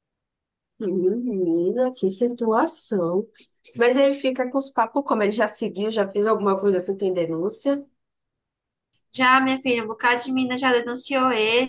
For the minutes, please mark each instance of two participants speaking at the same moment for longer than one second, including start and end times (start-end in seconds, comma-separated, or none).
none